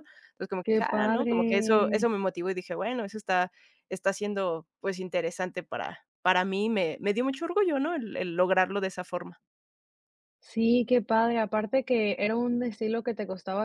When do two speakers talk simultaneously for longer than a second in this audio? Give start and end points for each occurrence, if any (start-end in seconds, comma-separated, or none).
0.6-2.1